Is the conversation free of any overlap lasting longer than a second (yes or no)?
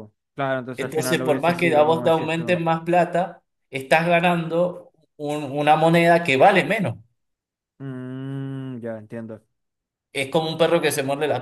no